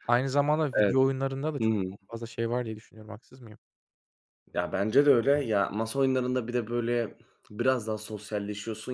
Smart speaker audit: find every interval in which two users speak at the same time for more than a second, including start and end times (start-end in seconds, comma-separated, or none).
none